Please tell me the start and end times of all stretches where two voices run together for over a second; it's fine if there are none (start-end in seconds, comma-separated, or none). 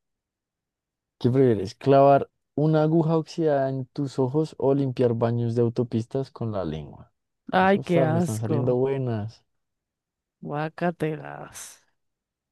7.6-8.9